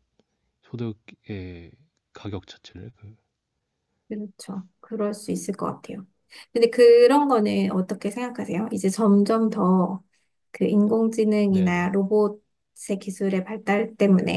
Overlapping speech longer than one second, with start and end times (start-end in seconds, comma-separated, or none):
none